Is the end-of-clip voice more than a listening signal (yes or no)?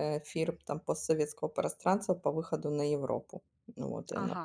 no